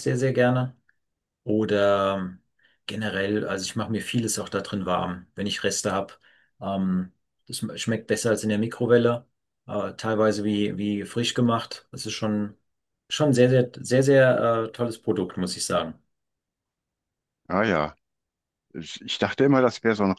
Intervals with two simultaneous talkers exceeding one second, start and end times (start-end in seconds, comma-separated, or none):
none